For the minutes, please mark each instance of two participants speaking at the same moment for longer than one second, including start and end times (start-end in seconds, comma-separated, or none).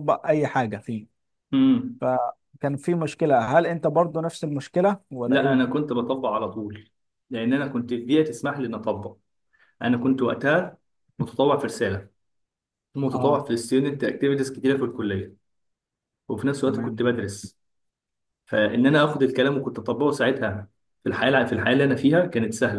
none